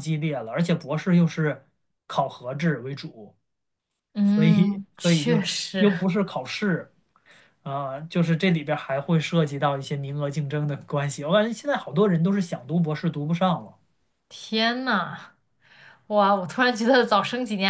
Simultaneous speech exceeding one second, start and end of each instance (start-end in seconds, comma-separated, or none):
4.2-5.9